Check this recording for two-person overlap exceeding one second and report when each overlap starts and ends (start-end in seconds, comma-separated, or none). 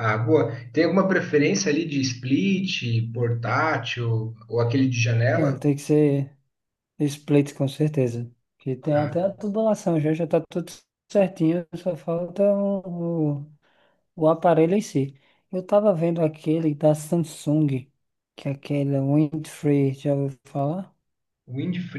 none